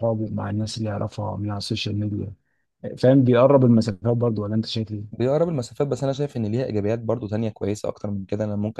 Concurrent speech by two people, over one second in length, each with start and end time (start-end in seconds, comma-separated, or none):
none